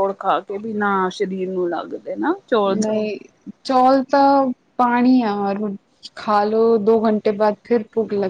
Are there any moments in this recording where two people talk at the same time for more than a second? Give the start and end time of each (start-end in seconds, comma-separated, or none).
none